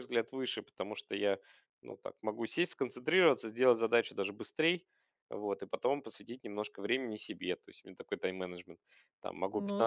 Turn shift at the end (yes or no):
no